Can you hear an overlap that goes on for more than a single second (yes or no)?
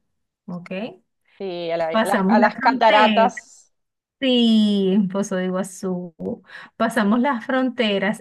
yes